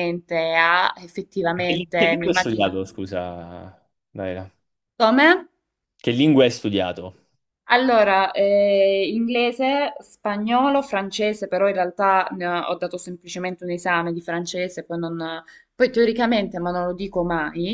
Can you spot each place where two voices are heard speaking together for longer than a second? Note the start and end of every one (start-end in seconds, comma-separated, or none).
1.5-2.8